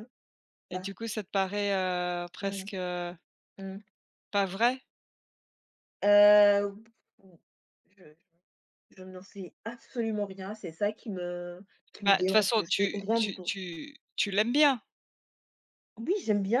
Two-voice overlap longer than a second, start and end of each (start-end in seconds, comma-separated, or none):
12.1-13.5